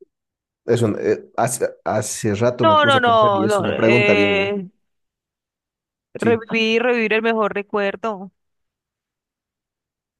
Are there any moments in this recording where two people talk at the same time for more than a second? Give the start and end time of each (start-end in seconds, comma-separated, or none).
2.6-4.5